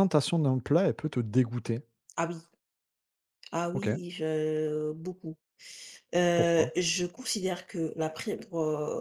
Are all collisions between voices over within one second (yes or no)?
yes